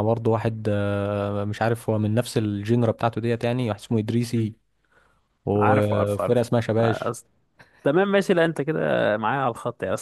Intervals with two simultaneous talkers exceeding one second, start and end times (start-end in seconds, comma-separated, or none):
5.6-7.1